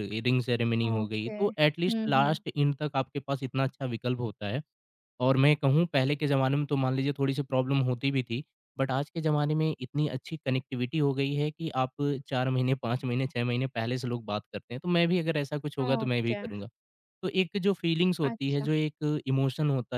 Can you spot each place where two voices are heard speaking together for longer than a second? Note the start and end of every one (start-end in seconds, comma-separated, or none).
0.9-2.4